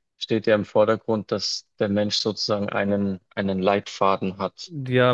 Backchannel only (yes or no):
no